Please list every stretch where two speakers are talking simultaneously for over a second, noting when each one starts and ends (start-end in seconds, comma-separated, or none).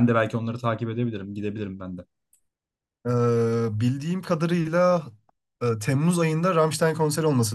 none